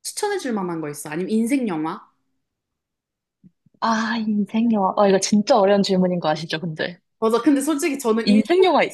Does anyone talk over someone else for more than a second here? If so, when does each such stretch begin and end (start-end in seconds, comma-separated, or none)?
none